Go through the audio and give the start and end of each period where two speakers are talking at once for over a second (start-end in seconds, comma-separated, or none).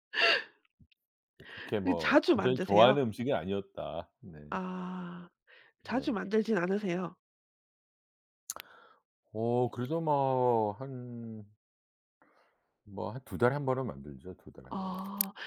1.8-3.0